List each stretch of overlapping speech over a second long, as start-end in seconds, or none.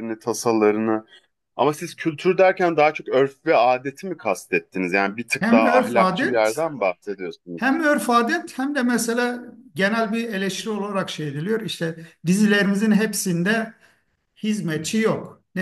5.4-6.6